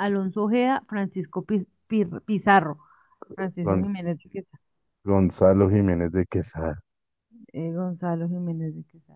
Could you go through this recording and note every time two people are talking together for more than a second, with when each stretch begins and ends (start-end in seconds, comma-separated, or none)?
none